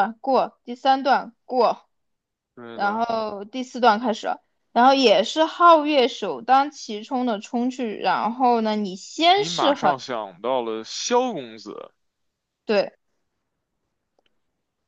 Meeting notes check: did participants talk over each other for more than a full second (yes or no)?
no